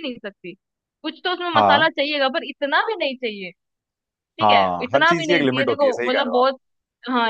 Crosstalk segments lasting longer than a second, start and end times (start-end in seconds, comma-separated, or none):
4.4-6.4